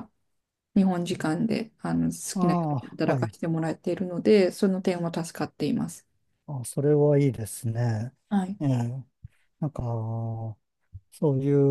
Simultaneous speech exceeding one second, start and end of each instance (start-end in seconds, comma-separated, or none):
none